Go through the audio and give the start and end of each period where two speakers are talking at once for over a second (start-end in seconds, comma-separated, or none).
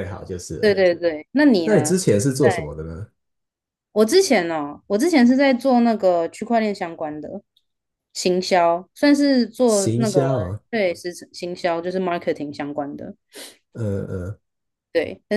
none